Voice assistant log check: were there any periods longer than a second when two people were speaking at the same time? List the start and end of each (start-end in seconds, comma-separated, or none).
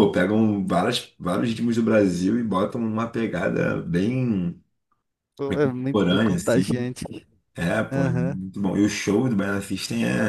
5.5-6.9